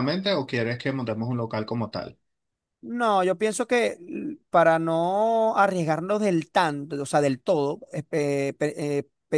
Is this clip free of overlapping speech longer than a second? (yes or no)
yes